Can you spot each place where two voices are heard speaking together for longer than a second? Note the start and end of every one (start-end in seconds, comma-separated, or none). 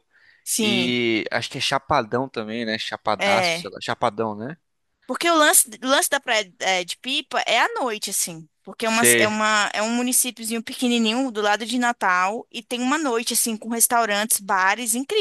none